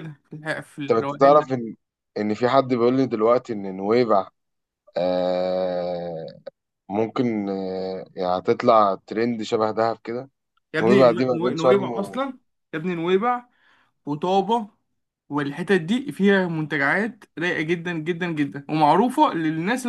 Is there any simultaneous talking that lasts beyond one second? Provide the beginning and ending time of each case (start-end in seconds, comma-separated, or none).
10.8-12.2